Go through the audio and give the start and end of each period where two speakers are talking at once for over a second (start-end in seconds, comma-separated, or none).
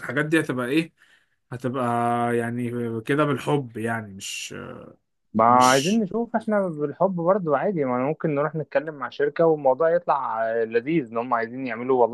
none